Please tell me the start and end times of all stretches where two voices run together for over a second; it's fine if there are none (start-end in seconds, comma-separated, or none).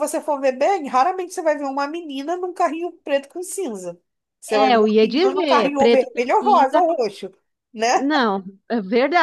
4.5-6.8